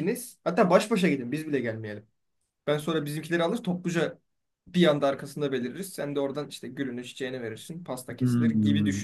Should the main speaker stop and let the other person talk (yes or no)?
yes